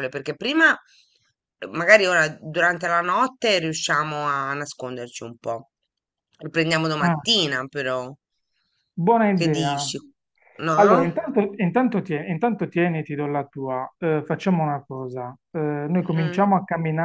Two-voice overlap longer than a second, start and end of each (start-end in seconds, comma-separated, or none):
none